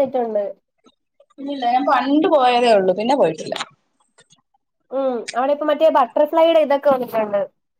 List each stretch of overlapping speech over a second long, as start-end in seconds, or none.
none